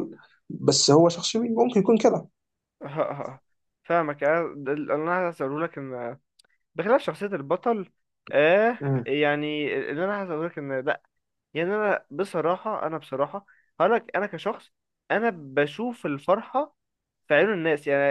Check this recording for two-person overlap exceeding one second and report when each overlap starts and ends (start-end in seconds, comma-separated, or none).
none